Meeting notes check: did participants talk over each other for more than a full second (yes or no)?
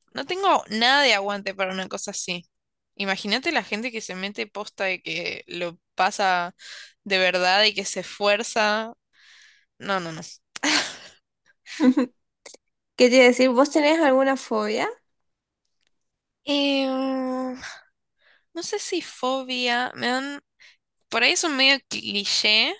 no